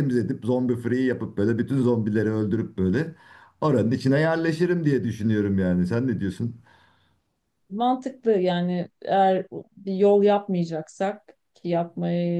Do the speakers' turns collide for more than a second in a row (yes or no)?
no